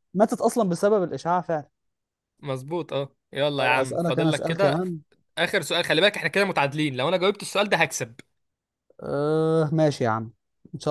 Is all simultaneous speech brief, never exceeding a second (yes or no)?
no